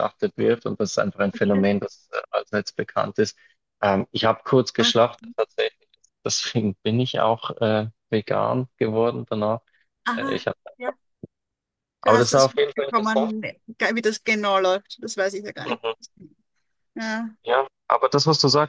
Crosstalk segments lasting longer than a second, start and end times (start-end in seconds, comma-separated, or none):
12.0-13.3